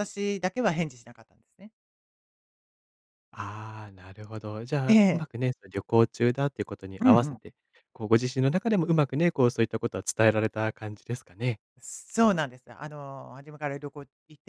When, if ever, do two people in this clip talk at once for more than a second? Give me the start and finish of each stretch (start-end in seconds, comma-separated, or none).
none